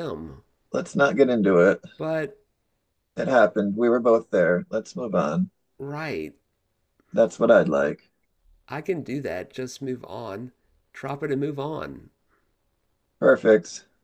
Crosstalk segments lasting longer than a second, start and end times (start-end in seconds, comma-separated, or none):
none